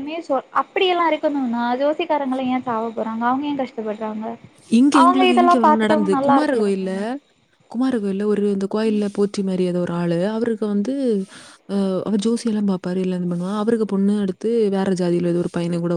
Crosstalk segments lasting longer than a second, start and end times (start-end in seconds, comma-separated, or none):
none